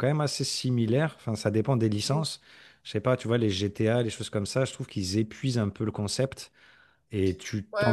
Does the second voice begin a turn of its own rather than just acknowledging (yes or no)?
yes